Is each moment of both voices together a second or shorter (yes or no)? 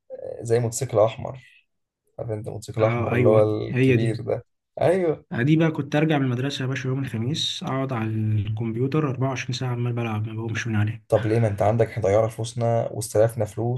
no